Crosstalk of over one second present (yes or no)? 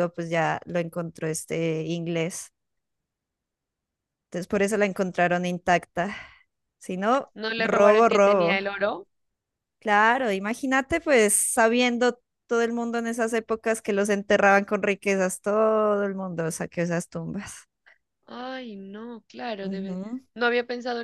yes